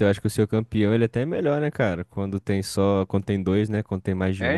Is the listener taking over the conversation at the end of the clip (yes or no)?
yes